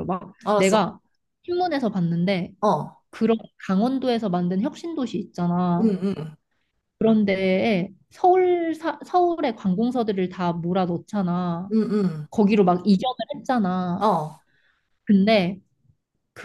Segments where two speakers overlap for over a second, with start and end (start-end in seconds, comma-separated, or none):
none